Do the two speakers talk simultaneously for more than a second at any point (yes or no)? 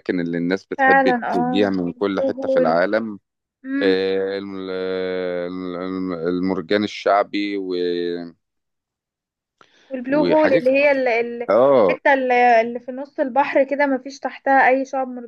yes